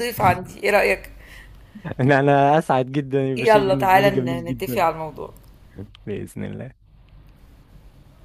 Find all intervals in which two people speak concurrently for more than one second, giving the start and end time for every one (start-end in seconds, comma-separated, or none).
3.4-4.9